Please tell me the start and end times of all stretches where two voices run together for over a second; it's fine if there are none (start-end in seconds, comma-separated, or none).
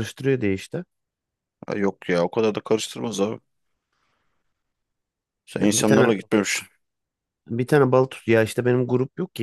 none